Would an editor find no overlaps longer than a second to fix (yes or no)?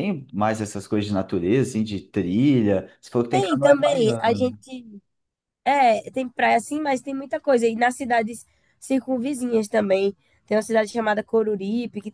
no